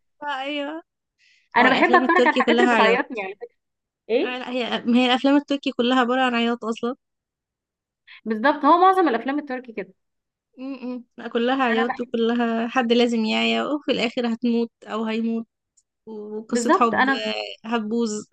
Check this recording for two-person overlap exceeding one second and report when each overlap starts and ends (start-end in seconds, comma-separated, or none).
1.6-3.0